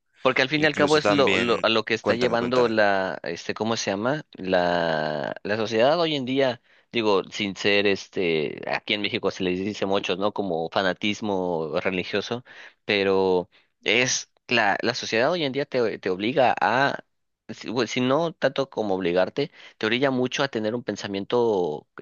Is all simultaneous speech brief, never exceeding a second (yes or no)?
no